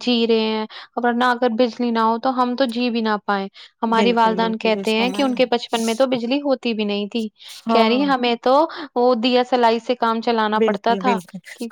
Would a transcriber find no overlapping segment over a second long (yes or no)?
no